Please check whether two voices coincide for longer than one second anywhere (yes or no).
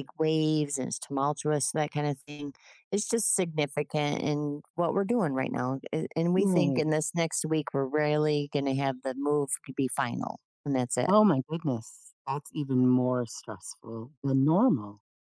no